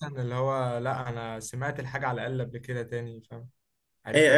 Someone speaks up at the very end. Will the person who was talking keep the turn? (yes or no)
no